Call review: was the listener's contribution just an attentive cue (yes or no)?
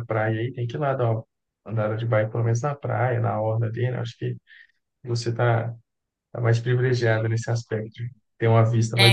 no